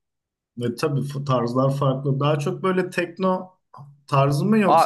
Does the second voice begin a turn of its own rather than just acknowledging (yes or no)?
yes